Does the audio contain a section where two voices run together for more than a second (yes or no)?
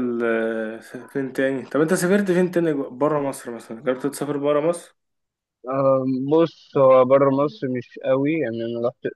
no